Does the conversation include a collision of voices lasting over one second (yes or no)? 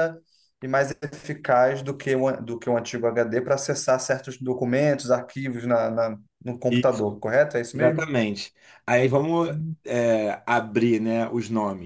no